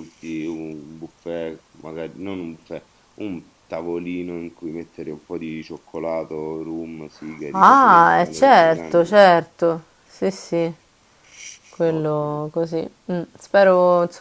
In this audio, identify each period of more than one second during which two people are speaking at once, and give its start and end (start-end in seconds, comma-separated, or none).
7.5-9.2